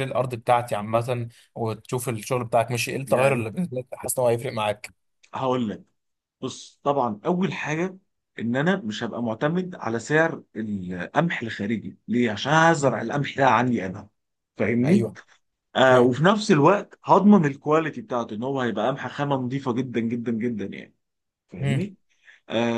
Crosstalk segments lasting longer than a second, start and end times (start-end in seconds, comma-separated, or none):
none